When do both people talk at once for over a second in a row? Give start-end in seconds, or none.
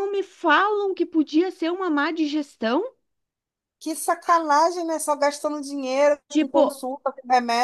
none